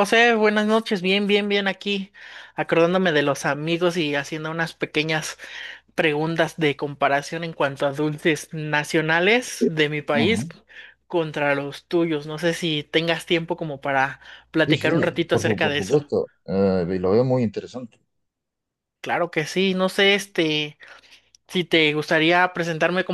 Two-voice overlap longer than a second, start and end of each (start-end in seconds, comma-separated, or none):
14.7-16.0